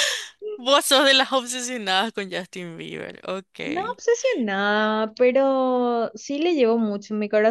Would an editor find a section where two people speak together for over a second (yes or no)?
no